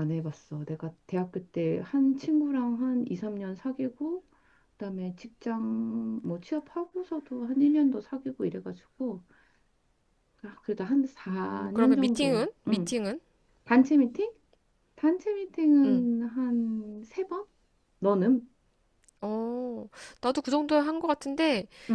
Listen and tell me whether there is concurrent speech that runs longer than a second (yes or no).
yes